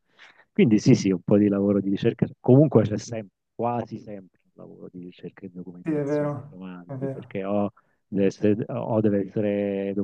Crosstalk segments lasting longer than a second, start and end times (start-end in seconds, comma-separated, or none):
5.8-7.4